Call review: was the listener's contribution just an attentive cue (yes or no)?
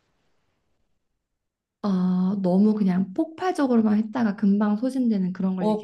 no